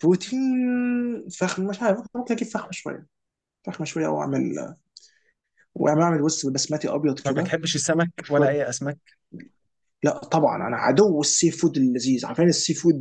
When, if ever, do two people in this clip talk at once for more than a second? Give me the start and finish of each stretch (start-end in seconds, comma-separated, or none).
none